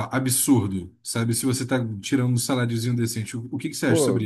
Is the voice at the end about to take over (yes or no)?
yes